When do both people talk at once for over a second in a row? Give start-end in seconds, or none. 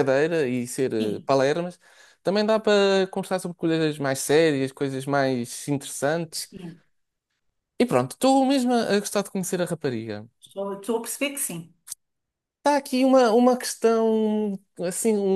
none